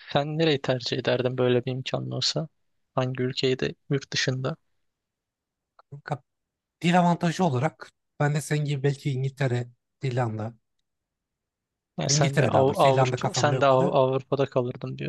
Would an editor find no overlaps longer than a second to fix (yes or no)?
no